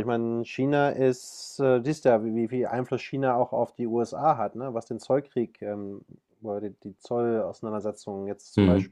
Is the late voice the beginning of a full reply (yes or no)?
no